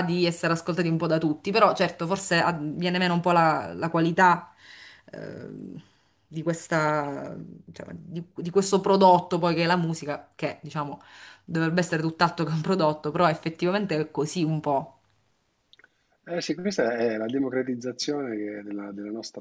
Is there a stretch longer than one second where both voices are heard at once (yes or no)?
no